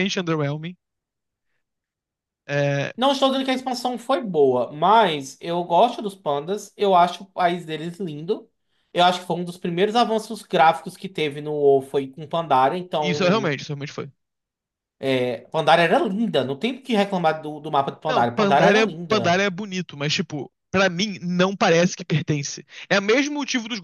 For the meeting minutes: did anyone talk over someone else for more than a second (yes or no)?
yes